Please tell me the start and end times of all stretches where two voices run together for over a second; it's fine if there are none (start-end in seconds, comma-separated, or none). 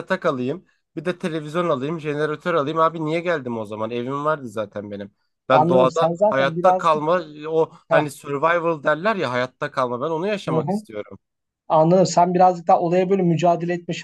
5.5-7.0